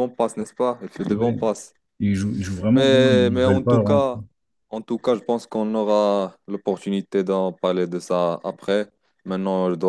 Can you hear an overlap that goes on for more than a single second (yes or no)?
yes